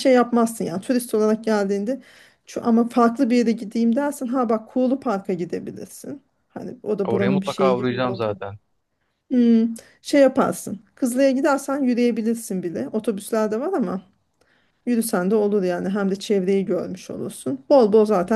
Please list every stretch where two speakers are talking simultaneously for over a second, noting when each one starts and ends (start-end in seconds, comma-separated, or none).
7.0-8.3